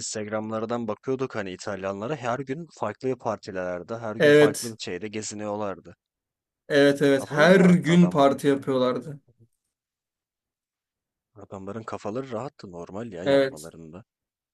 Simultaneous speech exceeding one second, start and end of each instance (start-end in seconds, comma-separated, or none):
7.2-8.4